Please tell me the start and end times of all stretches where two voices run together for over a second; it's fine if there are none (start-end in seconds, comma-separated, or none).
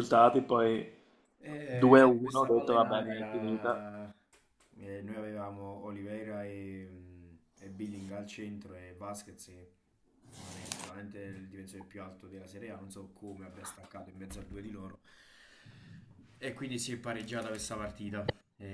1.7-3.8